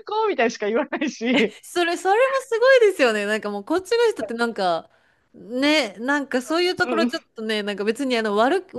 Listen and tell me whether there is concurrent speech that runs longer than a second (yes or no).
no